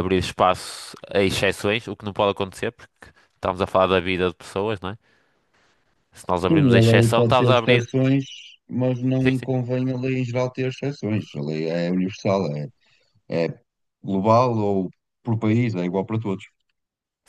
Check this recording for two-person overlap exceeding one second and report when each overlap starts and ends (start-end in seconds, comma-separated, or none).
6.5-7.9